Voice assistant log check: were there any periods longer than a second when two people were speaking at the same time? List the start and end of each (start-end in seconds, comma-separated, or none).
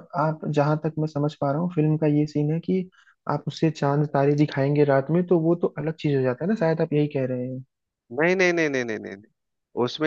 none